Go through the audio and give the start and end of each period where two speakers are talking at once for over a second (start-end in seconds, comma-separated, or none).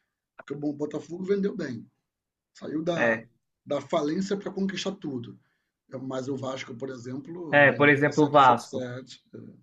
7.5-8.9